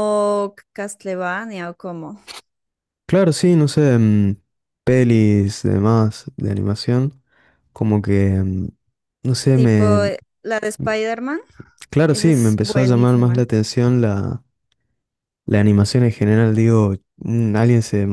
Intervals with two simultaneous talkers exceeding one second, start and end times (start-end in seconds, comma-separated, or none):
12.1-13.5